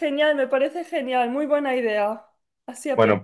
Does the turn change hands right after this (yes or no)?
yes